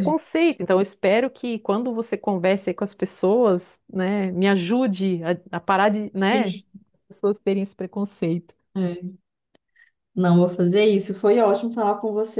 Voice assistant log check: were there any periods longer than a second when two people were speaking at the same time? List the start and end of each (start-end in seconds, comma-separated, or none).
none